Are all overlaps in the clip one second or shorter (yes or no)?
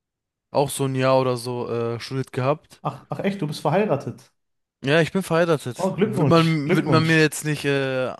no